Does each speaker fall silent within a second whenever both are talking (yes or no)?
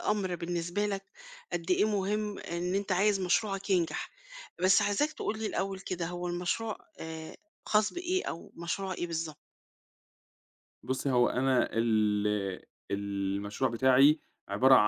yes